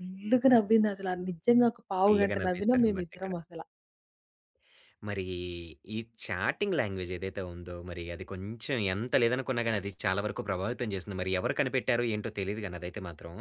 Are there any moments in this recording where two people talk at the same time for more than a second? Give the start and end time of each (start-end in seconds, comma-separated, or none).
2.0-3.3